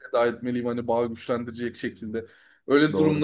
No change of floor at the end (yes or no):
yes